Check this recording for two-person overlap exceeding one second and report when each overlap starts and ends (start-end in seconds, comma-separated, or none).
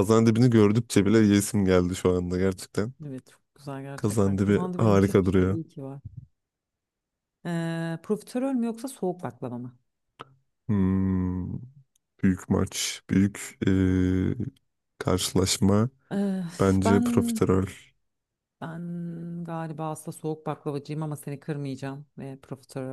4.0-5.6